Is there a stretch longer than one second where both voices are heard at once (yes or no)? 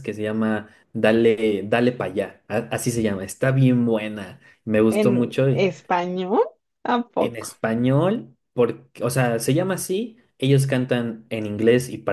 no